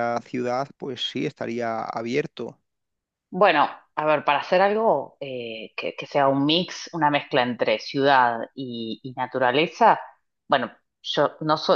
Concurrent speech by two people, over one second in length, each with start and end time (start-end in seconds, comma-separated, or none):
none